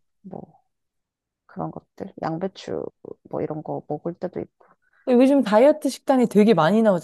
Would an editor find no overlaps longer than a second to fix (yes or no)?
yes